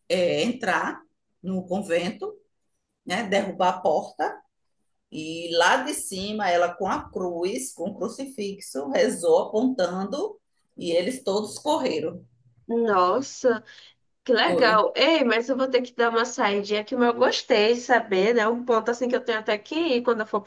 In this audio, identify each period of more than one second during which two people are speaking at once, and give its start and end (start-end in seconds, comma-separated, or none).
none